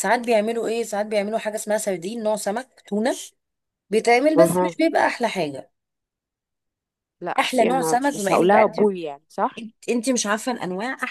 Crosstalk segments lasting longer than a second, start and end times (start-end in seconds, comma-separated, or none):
7.4-8.8